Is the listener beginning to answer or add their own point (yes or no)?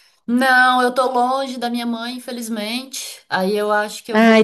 no